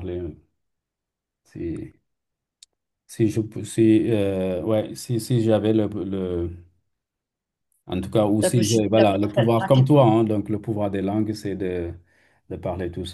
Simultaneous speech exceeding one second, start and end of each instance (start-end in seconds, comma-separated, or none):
8.4-10.1